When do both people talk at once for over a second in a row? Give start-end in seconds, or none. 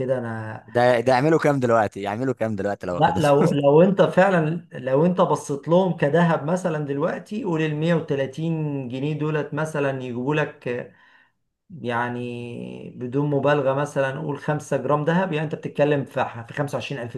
none